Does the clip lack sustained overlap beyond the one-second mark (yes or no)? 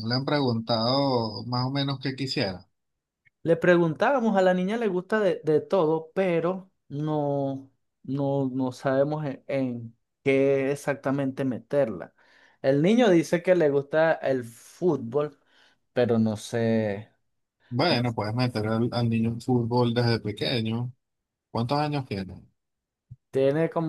yes